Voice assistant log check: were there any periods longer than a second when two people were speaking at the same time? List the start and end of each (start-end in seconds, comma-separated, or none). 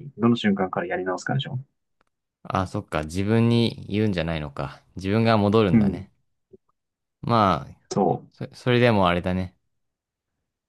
none